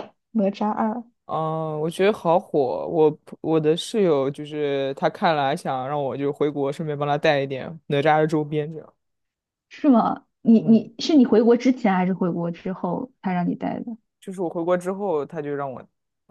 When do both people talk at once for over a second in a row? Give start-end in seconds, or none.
none